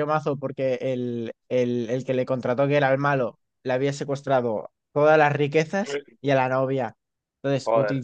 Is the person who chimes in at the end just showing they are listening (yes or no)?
yes